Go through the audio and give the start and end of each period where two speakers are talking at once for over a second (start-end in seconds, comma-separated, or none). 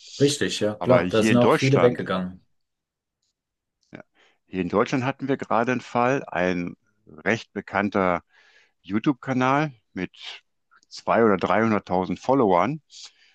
0.8-2.0